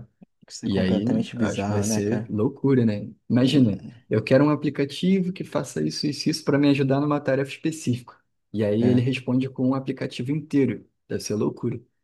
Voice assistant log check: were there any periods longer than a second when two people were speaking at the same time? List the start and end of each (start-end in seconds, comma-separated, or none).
0.6-2.3